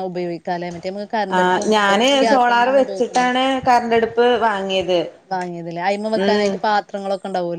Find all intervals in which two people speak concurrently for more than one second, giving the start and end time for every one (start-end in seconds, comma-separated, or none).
none